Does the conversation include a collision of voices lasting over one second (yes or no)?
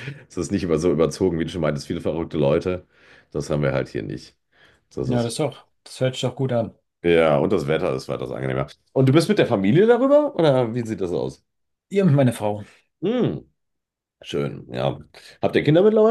no